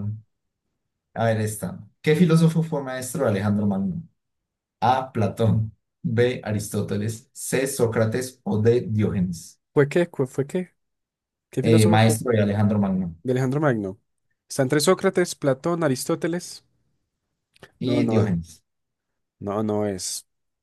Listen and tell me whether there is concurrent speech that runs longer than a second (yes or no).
no